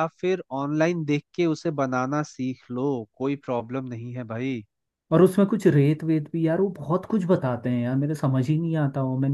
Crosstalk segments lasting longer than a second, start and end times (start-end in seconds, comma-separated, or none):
none